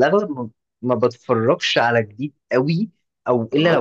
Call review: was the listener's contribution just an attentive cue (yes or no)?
yes